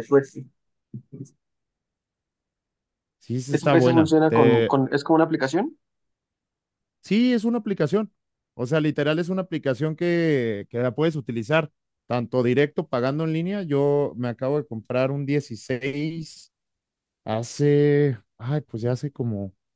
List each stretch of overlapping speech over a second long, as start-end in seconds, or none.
3.5-4.8